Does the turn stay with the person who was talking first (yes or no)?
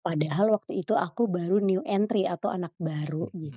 no